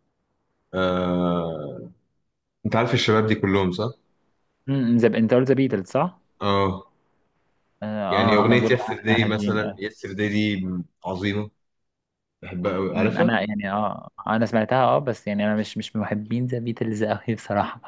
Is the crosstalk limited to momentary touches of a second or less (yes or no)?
no